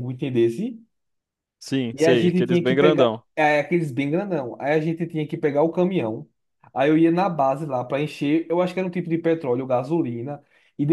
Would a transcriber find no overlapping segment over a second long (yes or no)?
no